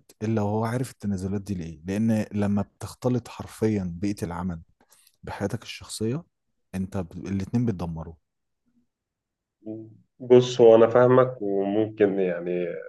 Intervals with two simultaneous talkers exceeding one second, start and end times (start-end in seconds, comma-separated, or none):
none